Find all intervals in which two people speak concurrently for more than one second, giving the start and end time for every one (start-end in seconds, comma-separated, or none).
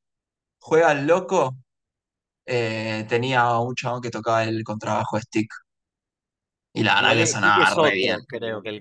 7.0-8.2